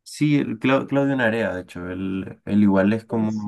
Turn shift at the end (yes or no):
no